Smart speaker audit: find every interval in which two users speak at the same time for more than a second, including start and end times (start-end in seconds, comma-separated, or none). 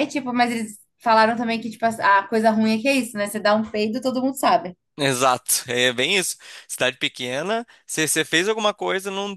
none